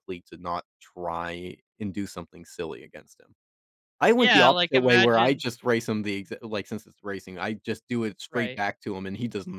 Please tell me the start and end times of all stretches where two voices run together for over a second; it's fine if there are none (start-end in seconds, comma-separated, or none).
4.2-5.4